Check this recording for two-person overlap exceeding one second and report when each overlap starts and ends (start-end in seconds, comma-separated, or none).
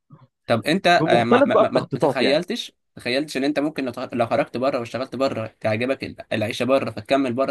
0.9-2.4